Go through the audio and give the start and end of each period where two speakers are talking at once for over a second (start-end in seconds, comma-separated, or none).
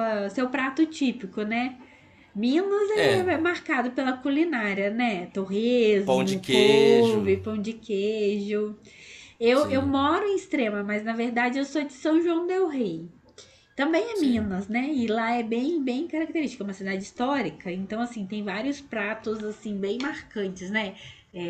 6.0-7.4